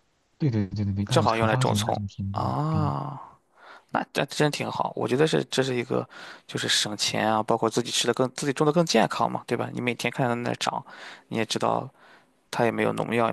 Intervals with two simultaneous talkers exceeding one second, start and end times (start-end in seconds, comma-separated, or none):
1.1-2.9